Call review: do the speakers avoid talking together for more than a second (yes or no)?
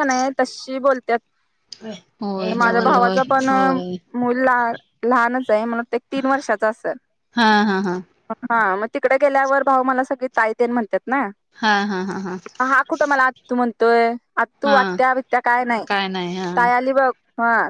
no